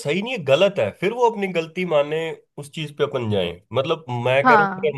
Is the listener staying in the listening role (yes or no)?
yes